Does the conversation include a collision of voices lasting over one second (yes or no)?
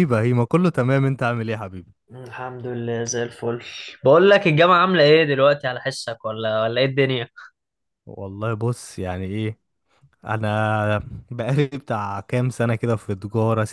no